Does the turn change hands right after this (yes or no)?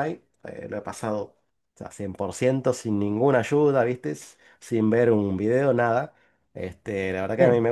no